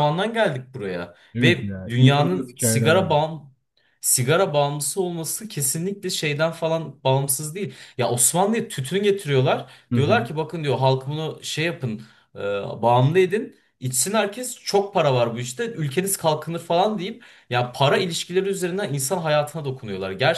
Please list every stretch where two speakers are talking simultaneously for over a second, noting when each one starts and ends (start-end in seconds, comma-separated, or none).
1.3-3.1